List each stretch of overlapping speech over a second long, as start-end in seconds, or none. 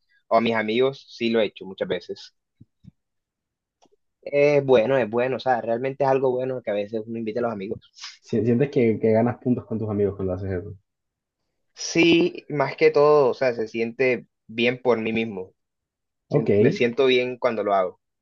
none